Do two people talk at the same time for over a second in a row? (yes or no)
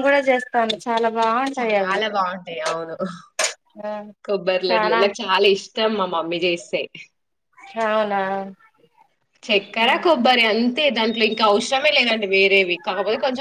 no